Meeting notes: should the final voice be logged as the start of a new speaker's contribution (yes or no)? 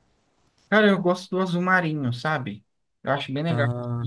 no